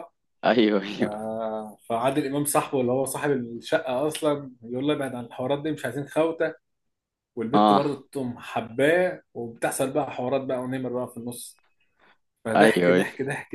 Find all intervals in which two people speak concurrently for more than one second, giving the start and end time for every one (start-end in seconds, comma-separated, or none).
none